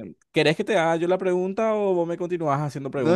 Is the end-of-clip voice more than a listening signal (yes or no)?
yes